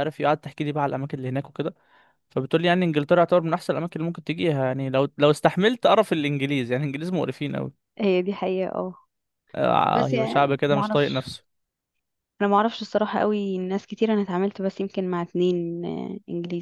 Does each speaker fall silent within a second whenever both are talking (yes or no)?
no